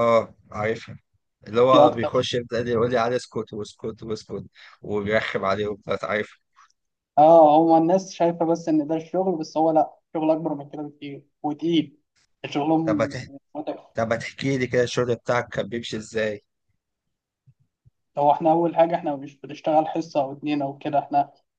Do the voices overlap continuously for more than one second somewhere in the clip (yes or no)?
no